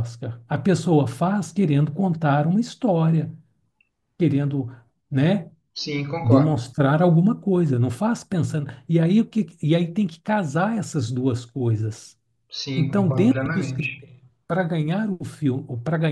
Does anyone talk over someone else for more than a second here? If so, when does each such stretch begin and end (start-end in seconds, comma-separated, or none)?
12.7-14.0